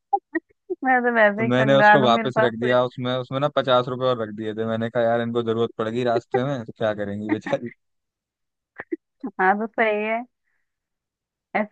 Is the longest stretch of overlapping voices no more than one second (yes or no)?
no